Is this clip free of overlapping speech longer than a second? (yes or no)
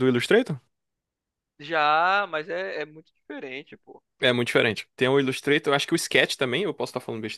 yes